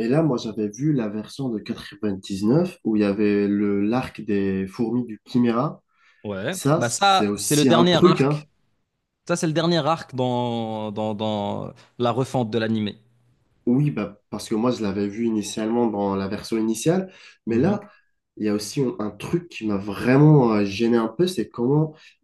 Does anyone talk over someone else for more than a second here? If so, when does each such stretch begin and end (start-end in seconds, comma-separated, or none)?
6.5-8.4